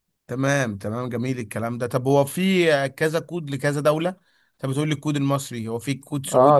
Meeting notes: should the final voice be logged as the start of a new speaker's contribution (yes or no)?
yes